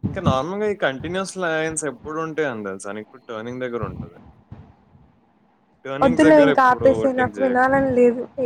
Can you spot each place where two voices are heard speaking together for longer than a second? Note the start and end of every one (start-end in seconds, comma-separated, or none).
6.0-7.8